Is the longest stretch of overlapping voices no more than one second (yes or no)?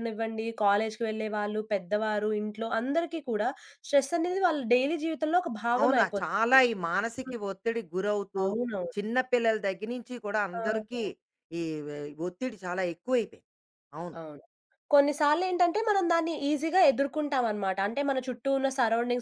yes